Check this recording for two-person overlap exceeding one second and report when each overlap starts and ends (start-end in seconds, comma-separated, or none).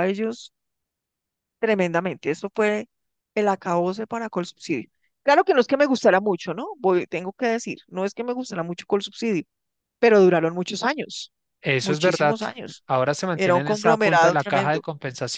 13.3-14.8